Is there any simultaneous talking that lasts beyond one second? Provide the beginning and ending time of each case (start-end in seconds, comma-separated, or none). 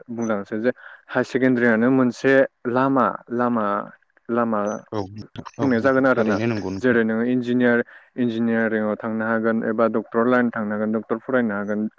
5.6-6.9